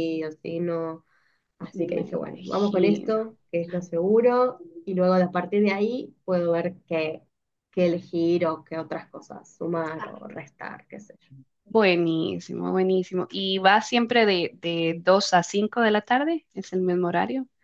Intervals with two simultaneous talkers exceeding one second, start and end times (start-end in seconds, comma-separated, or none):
1.7-3.2